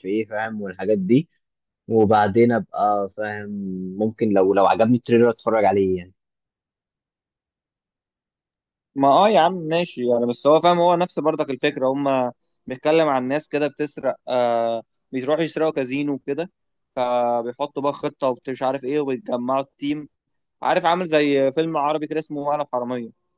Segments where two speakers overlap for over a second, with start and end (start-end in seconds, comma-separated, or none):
none